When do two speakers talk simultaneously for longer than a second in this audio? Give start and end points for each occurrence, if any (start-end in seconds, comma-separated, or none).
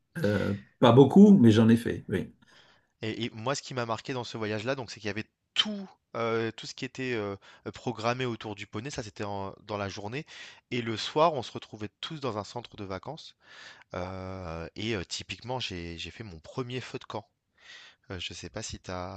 none